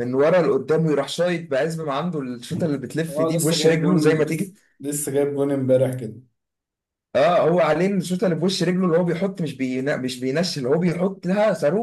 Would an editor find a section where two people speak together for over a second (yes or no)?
yes